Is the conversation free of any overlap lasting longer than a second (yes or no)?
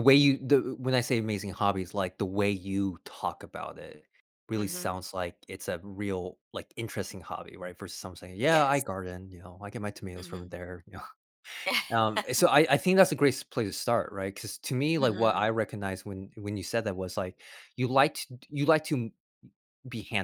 yes